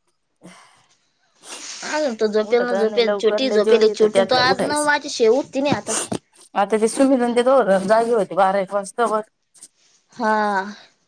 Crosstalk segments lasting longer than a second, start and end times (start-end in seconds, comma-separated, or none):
2.5-4.8